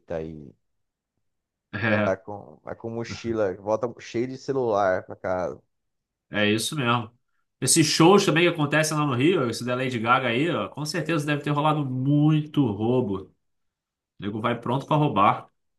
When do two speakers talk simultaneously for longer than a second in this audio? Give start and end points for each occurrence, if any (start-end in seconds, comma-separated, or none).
none